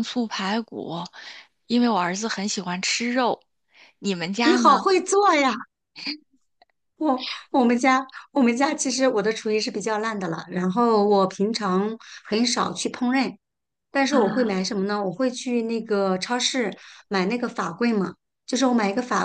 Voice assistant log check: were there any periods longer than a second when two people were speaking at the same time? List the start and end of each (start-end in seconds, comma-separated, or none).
none